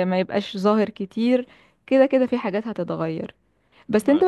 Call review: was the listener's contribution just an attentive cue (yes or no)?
yes